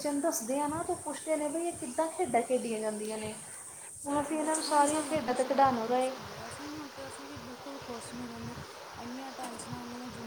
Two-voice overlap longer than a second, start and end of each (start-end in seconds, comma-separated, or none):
4.0-6.1